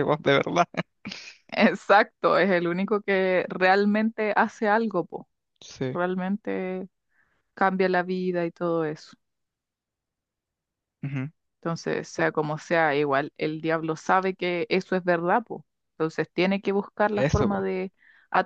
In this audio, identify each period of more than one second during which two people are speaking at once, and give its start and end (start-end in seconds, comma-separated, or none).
none